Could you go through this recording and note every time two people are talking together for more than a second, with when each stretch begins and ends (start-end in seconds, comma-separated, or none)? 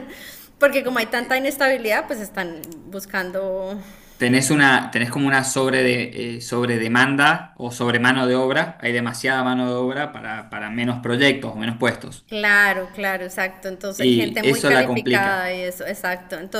13.9-15.5